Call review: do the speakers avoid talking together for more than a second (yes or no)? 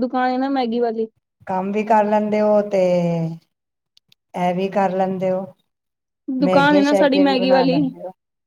no